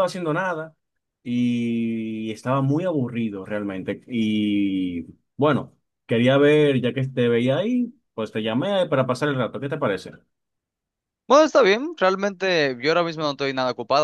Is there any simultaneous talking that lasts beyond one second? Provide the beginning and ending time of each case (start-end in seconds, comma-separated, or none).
none